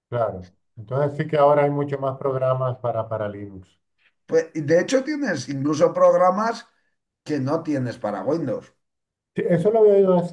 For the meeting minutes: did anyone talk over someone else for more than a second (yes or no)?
no